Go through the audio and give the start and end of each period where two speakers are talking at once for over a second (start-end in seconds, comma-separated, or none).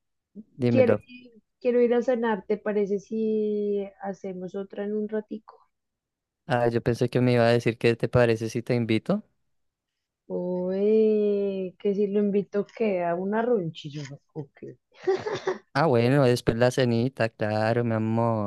none